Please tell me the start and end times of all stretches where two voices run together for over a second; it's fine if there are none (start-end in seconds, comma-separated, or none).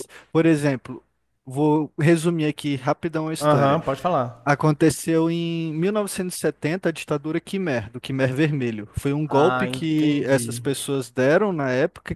9.3-10.6